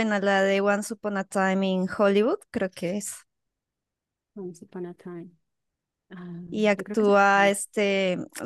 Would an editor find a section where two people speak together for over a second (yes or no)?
no